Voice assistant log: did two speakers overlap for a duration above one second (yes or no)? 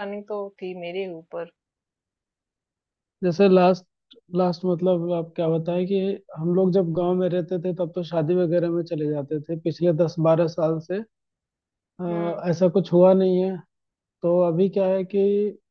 no